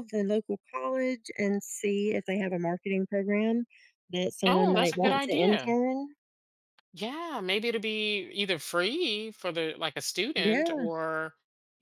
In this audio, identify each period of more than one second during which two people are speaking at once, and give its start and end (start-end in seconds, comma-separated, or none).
4.5-5.7